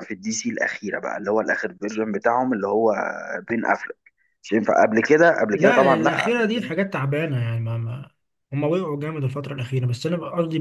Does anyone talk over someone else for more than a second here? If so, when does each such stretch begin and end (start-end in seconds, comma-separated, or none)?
5.5-6.7